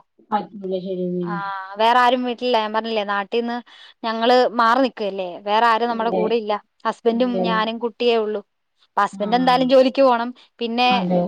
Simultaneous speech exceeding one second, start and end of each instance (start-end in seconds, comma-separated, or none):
none